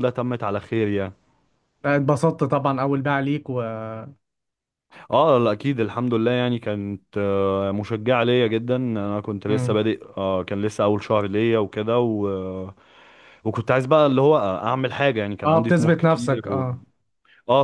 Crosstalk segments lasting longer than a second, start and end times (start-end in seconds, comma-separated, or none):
15.4-16.7